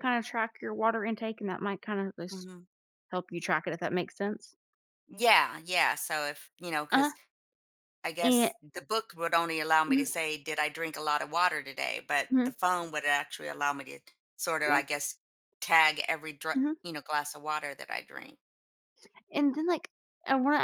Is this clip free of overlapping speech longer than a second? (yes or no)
yes